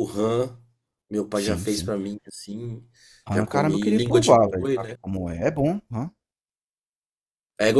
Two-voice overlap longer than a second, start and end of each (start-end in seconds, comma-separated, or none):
3.3-5.0